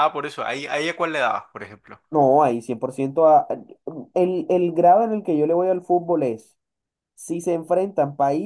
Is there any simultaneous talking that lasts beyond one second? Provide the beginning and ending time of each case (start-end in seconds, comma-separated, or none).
none